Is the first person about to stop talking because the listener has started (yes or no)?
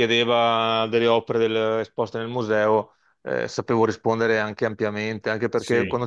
no